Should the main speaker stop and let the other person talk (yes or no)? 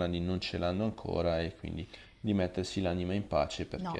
yes